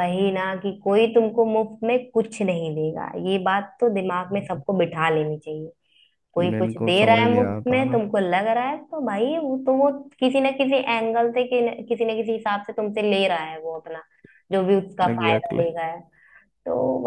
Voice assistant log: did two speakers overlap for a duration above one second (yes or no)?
yes